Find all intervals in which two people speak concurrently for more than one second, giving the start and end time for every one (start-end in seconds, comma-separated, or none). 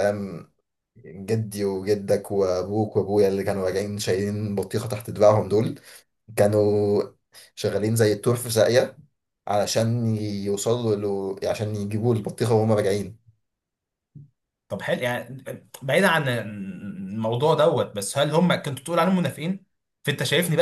none